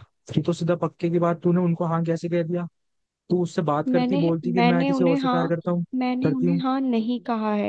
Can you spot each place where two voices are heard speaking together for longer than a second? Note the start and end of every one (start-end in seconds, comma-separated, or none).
3.9-5.4